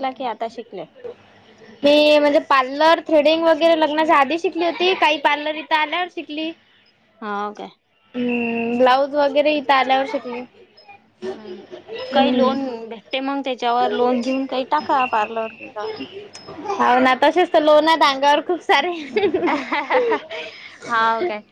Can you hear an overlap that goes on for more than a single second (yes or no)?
no